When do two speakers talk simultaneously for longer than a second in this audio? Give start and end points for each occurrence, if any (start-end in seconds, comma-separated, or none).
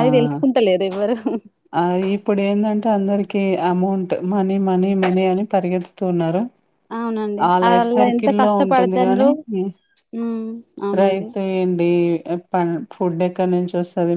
7.5-9.3